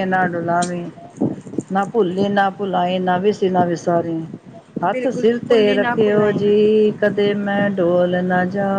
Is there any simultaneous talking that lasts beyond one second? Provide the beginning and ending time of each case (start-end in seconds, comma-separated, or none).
4.8-6.5